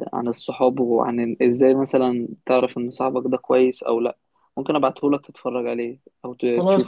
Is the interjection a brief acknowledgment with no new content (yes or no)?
no